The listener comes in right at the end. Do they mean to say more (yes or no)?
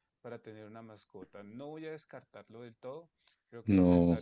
no